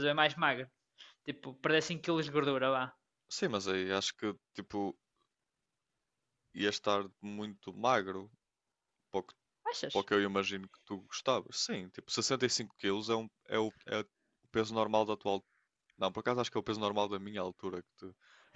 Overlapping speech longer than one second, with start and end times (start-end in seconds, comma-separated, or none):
none